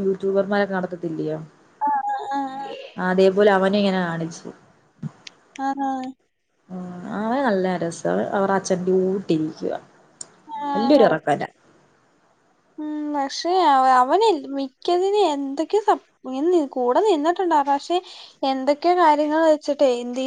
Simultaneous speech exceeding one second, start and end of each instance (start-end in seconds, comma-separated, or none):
none